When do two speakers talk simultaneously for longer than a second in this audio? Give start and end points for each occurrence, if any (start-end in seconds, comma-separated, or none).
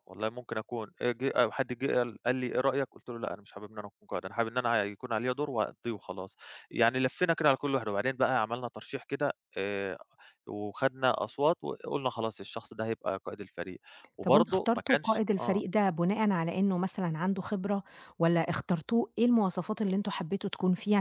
14.2-15.6